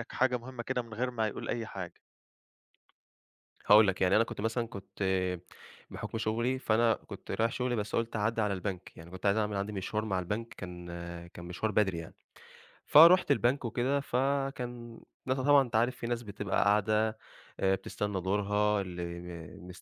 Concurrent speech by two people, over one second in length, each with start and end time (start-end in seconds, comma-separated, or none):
none